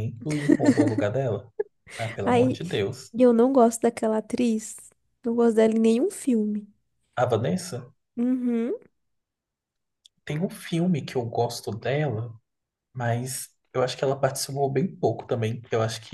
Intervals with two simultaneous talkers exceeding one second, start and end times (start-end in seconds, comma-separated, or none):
none